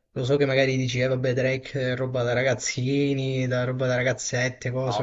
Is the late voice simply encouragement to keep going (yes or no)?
no